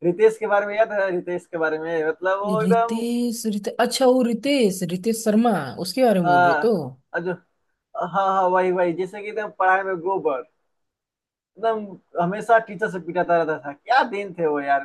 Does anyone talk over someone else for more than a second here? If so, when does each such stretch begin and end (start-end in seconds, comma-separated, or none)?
none